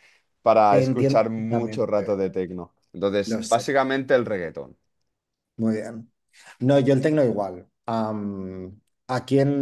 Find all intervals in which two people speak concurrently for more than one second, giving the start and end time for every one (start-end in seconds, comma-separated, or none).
0.7-2.2